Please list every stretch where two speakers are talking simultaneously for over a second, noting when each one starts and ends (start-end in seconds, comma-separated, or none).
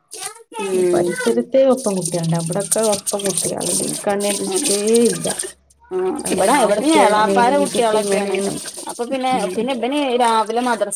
6.3-8.4